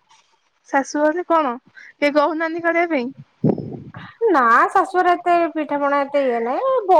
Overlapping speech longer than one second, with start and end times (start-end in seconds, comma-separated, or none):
none